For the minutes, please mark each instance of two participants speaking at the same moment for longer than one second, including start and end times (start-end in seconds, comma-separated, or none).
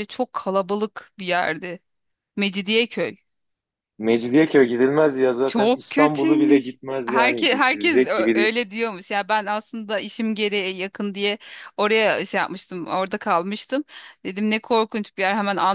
5.4-8.5